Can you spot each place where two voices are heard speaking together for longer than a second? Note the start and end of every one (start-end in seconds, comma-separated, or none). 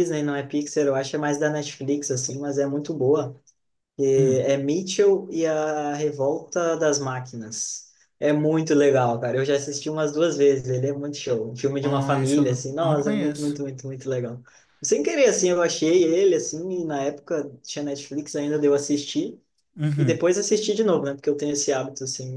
11.8-13.6